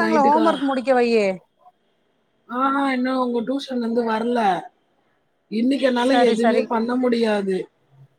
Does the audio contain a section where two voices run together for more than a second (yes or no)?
no